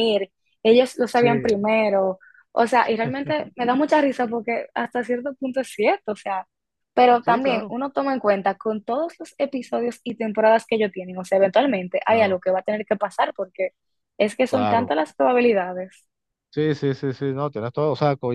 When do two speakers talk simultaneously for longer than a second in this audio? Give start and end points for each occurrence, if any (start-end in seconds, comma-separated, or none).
none